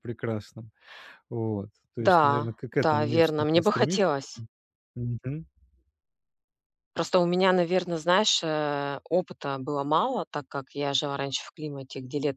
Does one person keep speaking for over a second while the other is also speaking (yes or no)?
yes